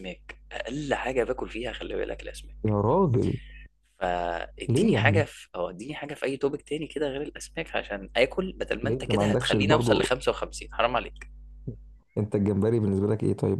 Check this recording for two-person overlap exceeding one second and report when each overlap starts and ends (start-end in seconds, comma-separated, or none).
8.8-10.1